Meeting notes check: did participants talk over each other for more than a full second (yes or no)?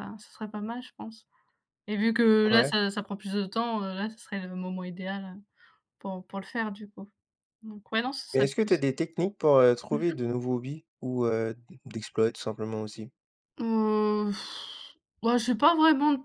no